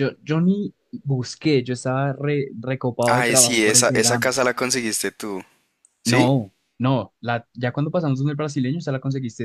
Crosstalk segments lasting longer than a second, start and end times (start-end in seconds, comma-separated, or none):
3.1-4.3